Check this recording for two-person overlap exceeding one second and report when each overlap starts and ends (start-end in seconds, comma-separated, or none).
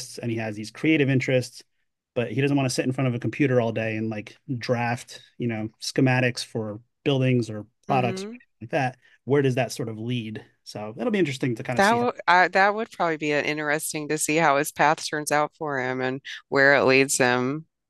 none